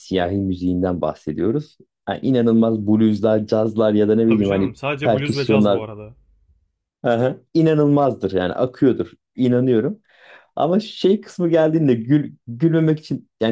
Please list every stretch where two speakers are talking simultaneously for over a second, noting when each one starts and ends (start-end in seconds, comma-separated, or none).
4.3-5.8